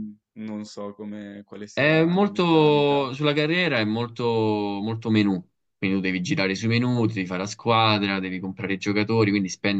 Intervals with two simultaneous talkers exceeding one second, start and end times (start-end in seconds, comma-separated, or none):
1.7-3.1